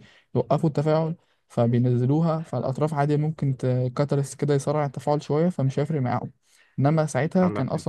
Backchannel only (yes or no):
yes